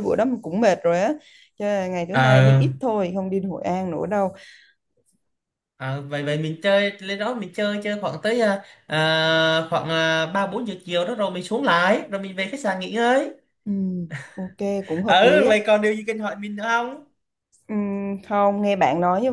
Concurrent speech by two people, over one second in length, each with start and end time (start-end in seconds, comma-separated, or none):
none